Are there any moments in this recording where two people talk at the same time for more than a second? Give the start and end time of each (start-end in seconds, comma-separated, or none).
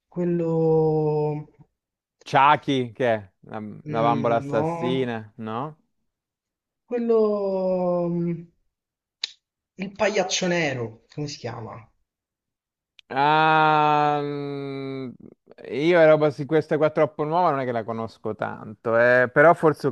3.9-5.1